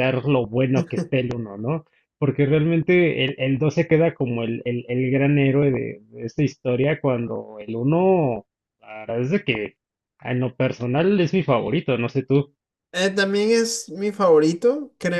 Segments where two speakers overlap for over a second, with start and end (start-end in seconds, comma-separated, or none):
none